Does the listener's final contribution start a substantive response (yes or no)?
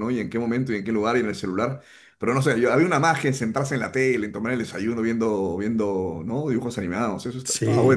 yes